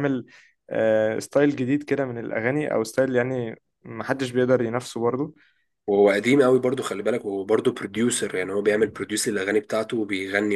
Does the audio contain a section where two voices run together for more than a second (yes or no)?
no